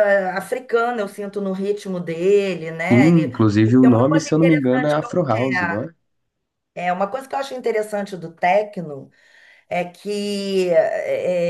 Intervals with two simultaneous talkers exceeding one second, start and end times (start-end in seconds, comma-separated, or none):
2.9-5.5